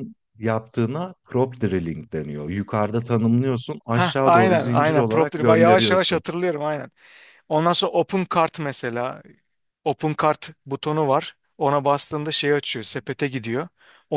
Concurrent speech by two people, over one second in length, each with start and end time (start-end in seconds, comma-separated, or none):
3.9-6.2